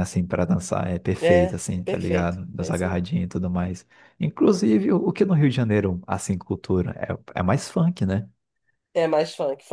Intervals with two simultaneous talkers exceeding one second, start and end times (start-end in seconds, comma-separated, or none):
1.2-3.1